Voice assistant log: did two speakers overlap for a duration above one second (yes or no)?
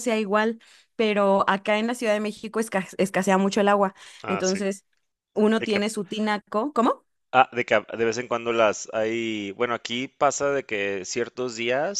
no